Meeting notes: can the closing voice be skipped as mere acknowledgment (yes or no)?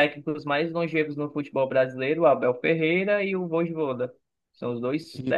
yes